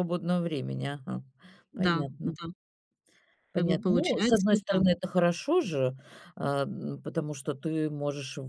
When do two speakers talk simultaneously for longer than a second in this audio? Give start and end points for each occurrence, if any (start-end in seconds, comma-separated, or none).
3.5-4.8